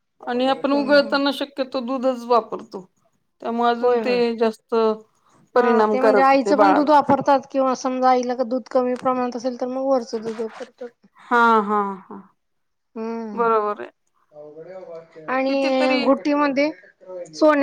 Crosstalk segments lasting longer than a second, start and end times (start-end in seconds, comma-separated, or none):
5.5-6.9